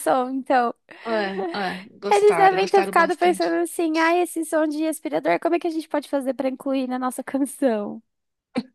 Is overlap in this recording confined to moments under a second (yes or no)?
no